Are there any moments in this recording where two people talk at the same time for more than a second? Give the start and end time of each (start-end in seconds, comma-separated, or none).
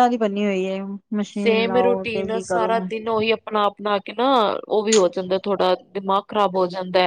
1.4-2.7